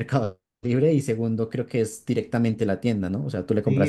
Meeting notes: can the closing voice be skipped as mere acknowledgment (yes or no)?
no